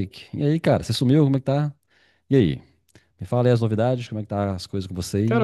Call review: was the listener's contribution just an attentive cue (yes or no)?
no